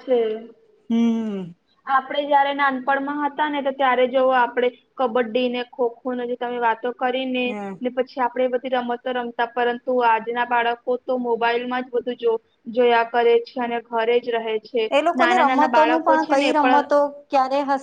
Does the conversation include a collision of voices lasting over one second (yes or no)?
yes